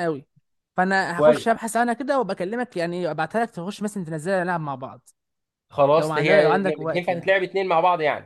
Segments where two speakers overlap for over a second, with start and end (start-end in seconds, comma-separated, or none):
6.0-7.3